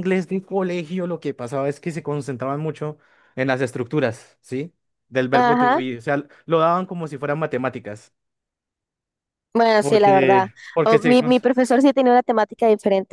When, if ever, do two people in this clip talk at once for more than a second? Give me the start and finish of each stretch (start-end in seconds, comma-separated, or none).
9.8-11.4